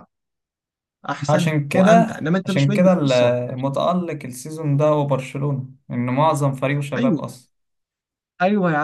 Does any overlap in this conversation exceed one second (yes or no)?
yes